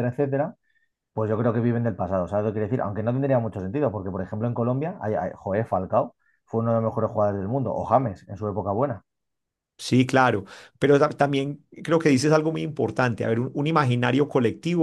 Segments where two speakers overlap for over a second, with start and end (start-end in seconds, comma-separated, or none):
none